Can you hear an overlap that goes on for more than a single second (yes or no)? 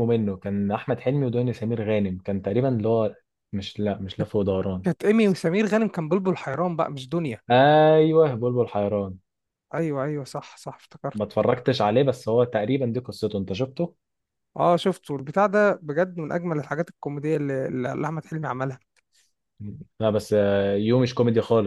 no